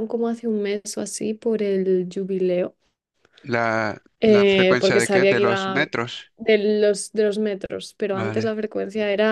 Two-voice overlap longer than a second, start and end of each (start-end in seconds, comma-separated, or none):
4.2-5.9